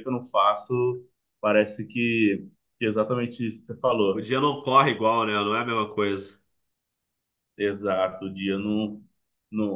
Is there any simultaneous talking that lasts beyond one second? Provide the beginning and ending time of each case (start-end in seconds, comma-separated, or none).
none